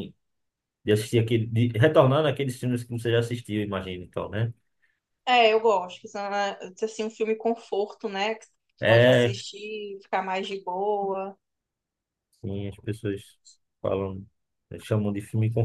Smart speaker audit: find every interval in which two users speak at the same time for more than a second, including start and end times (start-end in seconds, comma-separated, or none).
none